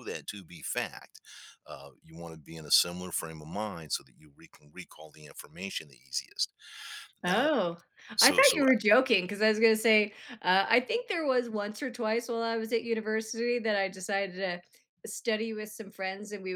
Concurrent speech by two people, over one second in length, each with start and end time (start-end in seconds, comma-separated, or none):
none